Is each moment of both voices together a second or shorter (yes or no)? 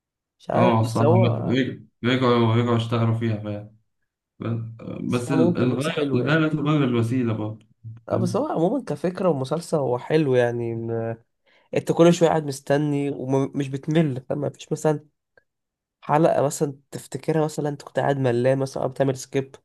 no